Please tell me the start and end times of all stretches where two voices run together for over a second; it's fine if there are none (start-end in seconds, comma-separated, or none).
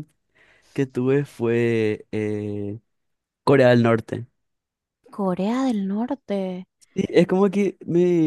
none